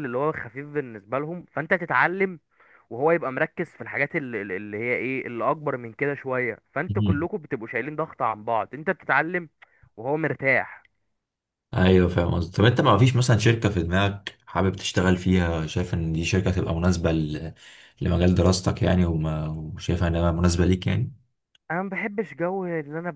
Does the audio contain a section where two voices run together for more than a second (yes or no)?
no